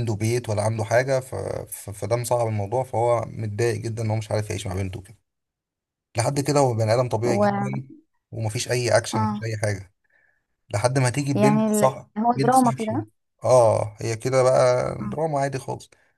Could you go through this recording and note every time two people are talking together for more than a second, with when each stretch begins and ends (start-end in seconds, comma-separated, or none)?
11.3-13.1